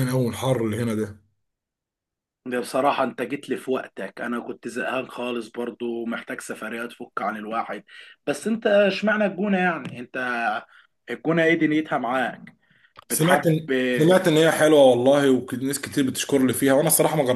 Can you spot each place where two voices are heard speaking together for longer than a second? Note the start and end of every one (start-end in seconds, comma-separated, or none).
none